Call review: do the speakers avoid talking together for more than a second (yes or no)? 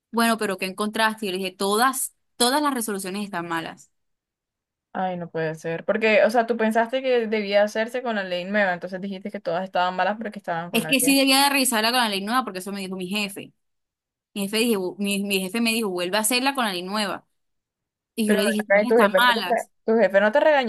no